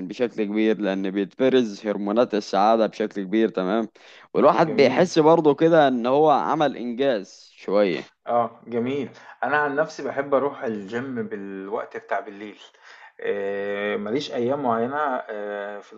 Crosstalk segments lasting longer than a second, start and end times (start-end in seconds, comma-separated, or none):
none